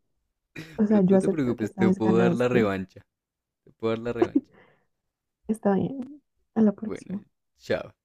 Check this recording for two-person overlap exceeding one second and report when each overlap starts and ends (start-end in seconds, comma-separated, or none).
0.8-2.7